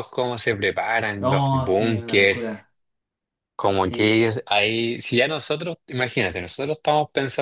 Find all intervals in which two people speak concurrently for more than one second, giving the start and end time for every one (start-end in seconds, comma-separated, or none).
1.2-2.5